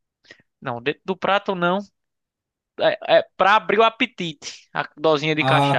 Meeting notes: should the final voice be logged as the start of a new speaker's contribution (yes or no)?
yes